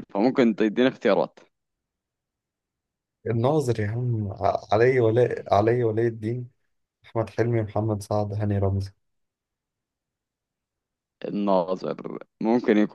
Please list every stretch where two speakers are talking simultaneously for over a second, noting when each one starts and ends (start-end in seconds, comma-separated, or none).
none